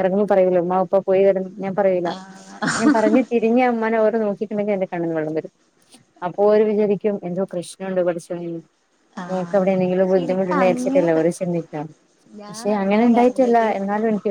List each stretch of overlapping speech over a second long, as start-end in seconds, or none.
9.3-11.2